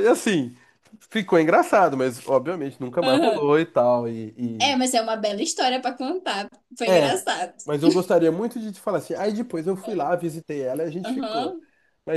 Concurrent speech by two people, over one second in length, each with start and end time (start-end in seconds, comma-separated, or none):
none